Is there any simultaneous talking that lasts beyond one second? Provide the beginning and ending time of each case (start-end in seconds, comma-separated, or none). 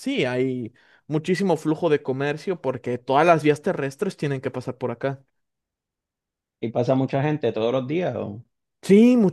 none